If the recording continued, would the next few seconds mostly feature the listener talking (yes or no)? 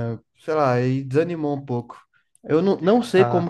no